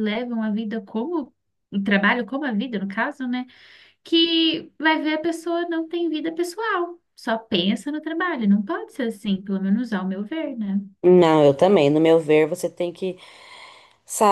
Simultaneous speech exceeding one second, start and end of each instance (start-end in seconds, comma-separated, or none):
none